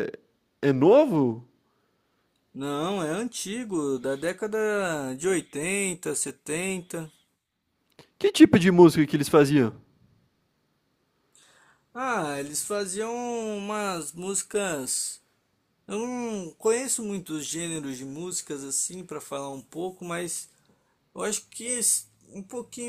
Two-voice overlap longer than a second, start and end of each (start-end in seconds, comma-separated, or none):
none